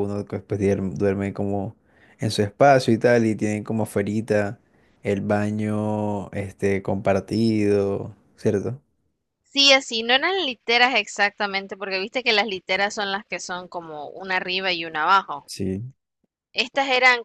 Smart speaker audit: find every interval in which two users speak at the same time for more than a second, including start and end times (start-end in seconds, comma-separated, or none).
none